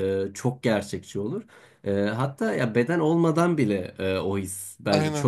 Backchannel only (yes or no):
yes